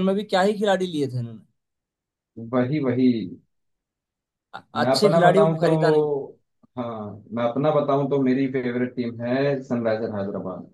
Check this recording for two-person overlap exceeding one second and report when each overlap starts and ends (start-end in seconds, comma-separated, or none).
4.8-6.1